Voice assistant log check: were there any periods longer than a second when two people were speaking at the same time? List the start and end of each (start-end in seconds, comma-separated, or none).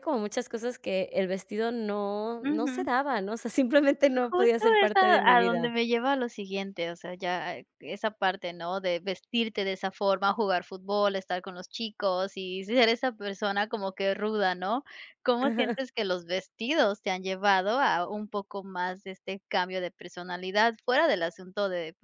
4.1-5.7